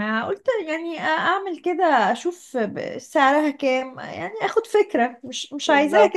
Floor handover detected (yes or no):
no